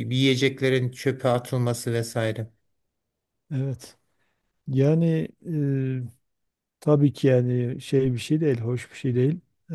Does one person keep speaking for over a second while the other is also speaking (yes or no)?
no